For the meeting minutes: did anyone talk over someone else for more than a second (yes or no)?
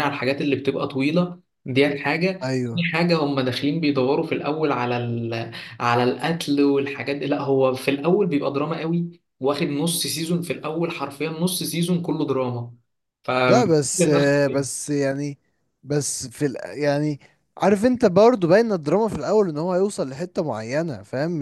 no